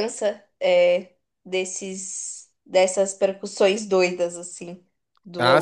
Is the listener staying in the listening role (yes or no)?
no